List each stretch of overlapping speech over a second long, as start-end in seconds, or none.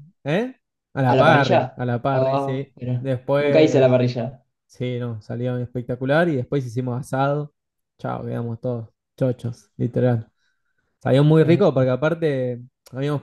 1.1-4.0